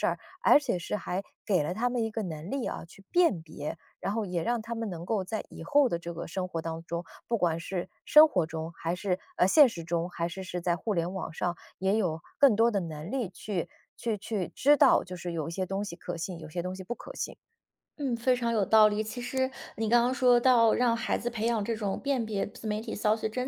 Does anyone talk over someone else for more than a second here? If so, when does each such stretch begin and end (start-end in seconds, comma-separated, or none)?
none